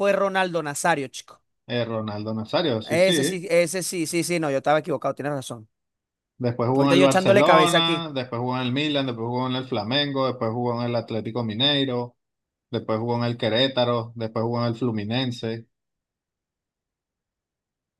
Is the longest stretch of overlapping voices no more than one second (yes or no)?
no